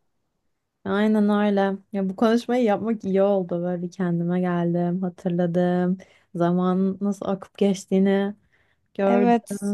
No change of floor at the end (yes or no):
no